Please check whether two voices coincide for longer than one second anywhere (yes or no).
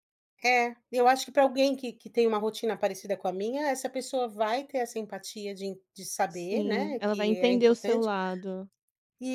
yes